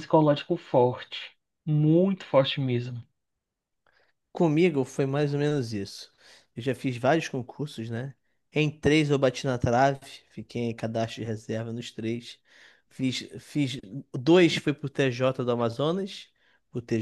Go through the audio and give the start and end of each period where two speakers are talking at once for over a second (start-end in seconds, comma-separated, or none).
none